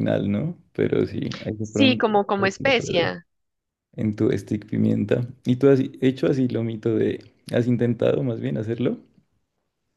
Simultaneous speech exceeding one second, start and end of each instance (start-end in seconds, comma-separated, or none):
1.6-3.1